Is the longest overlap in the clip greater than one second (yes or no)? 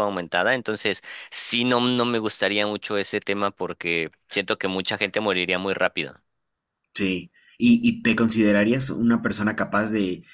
no